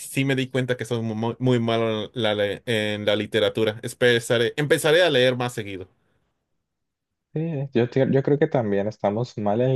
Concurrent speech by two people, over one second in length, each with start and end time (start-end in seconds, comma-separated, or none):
none